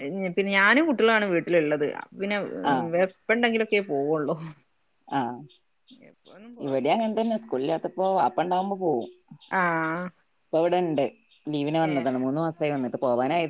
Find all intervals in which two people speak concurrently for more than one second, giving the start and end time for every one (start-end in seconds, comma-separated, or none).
none